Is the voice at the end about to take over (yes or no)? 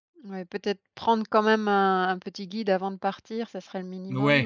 yes